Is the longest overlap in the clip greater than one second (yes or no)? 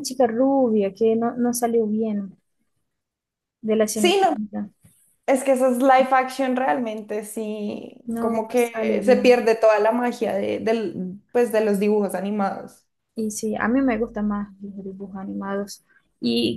yes